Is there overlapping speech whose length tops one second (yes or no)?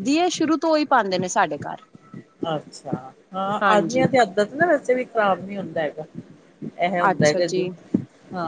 no